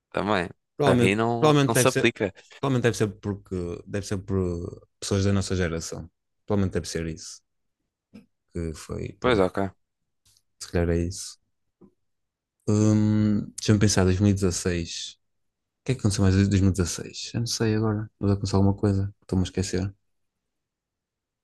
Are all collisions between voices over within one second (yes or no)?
no